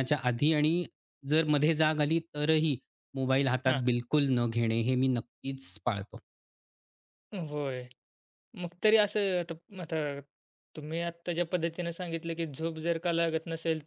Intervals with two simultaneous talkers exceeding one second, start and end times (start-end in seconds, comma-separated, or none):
none